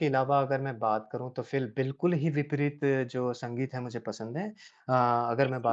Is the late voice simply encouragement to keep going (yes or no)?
yes